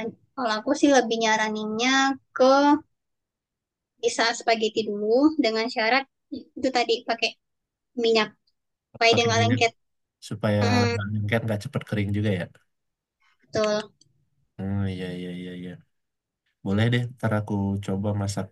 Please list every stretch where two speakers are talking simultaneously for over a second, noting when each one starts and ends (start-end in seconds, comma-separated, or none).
none